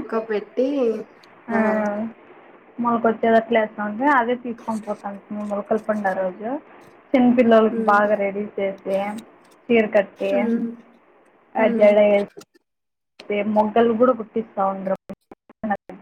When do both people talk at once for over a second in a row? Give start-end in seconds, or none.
none